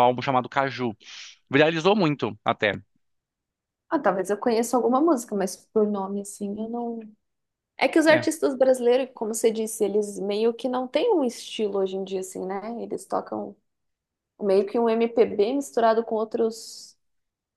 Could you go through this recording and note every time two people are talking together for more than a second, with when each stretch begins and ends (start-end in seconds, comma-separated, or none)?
none